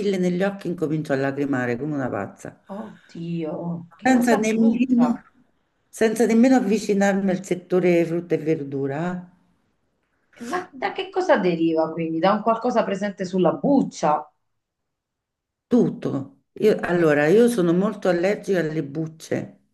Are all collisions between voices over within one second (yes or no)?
no